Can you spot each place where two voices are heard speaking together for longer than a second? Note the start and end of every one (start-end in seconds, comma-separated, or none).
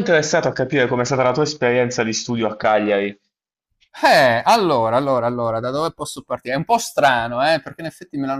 none